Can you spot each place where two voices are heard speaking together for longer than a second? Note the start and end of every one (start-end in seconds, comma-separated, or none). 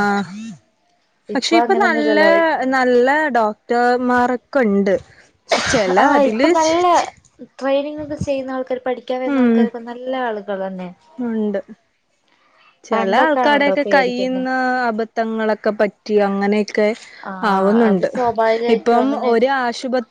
12.9-14.4